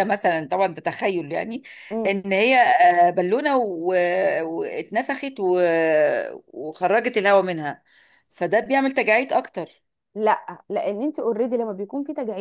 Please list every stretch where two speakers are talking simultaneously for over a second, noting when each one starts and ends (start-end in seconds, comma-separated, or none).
none